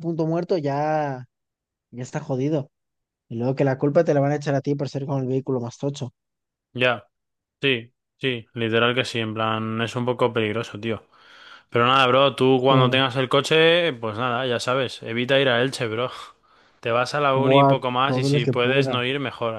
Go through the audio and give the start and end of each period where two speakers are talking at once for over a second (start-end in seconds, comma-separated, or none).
17.4-19.0